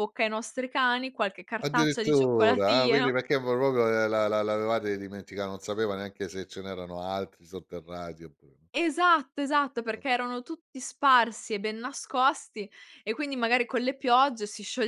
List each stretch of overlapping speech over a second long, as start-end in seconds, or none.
1.6-3.1